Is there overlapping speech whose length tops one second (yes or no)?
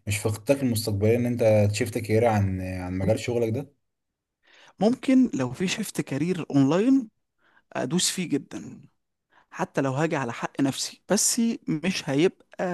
no